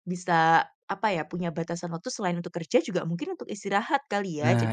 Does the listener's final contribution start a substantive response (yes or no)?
no